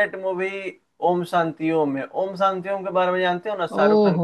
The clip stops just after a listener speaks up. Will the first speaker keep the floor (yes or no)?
no